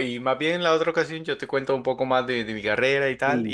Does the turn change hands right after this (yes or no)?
yes